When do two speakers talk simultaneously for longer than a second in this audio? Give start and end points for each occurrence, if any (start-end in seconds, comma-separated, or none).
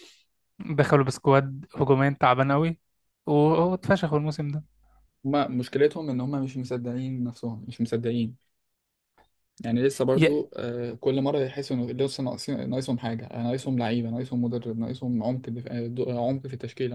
none